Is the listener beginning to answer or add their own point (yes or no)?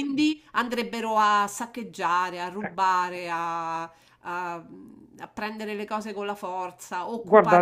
yes